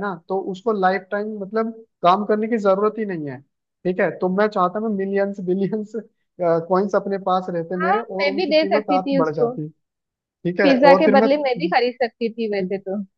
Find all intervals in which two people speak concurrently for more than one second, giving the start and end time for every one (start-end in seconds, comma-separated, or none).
7.8-9.5